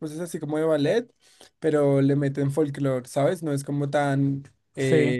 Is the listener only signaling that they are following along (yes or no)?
yes